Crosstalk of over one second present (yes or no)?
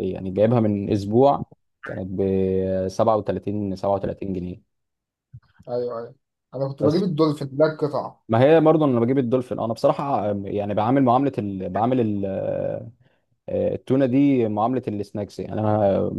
no